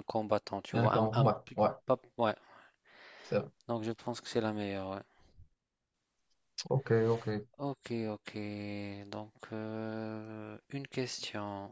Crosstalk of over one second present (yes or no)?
no